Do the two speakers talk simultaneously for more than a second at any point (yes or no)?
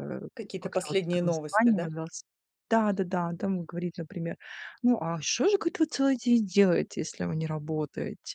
yes